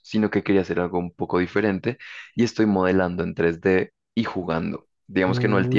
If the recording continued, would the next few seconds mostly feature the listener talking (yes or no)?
no